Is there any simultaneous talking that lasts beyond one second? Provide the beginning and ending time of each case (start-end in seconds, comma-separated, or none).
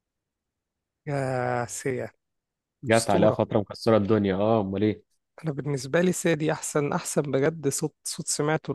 none